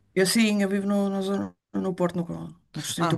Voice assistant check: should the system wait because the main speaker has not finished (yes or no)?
no